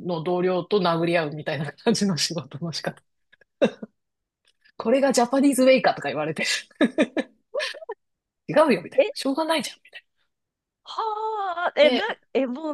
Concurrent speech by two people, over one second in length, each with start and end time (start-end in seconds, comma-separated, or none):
none